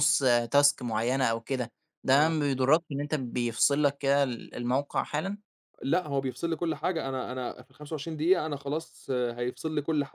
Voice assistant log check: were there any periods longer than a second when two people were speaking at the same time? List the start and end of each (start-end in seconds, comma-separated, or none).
none